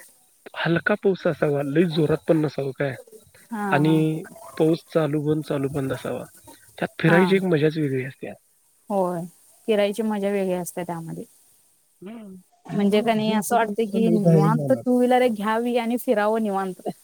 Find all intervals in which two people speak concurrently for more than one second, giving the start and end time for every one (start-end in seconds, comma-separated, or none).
12.7-14.8